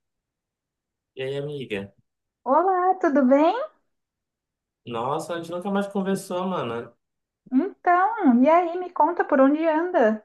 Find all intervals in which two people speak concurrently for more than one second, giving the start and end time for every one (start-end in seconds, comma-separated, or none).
none